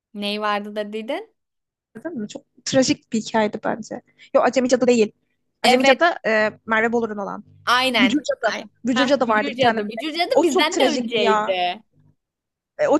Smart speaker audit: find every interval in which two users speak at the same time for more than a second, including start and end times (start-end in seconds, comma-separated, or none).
8.0-11.6